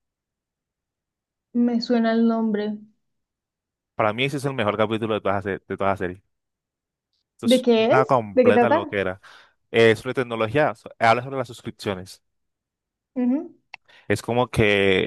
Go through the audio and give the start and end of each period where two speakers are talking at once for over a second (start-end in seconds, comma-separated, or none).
7.4-8.8